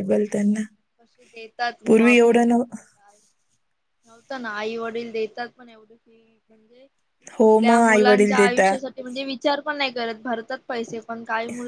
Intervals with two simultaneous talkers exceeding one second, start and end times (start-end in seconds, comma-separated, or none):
7.4-8.8